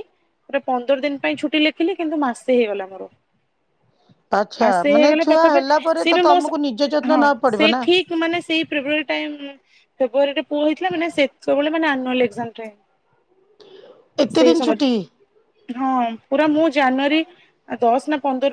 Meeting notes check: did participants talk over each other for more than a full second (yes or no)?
yes